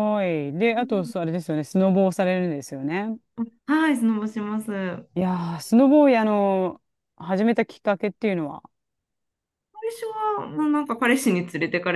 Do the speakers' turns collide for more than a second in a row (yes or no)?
no